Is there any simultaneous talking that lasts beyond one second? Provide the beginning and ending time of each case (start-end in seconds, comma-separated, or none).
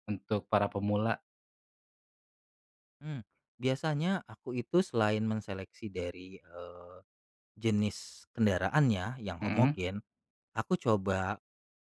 none